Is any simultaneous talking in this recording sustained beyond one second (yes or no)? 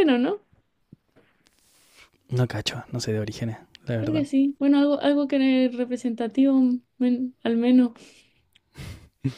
no